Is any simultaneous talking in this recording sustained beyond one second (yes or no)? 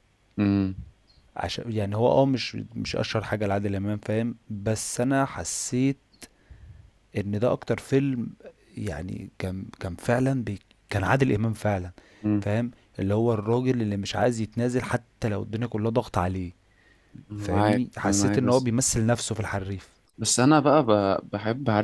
yes